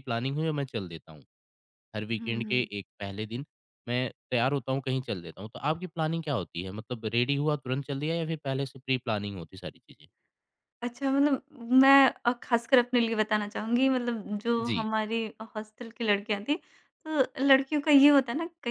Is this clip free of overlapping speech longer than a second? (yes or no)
yes